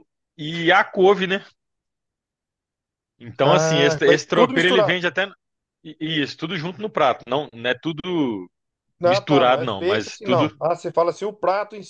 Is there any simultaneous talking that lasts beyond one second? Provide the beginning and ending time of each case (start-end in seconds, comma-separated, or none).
3.4-5.0, 9.0-10.6